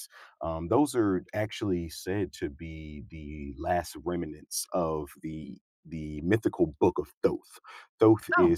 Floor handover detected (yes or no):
no